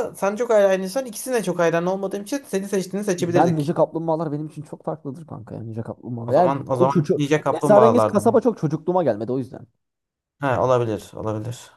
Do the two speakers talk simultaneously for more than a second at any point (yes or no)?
yes